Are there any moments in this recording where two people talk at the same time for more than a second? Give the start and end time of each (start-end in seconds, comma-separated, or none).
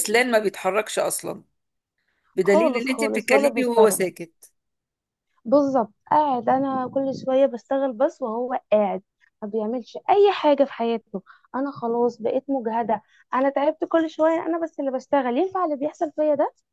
2.4-4.0